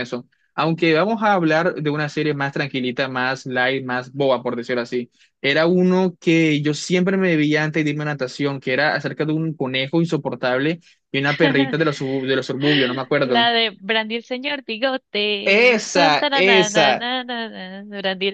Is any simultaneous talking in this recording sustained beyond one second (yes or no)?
yes